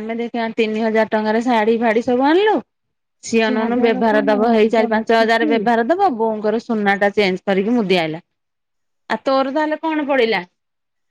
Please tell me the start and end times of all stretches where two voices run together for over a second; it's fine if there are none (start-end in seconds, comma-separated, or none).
3.5-5.5